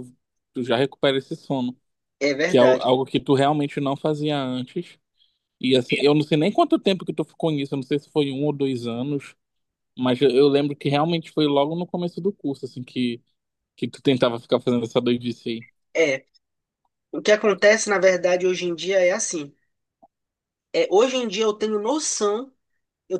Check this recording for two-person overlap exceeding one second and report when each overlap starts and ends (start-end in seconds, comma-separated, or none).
none